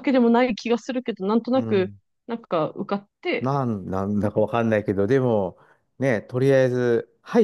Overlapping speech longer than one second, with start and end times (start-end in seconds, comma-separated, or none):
none